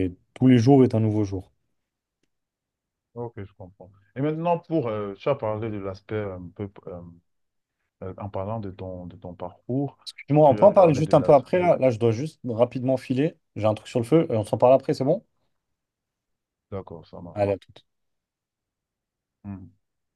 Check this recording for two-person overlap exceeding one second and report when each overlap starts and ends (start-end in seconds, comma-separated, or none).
10.4-11.7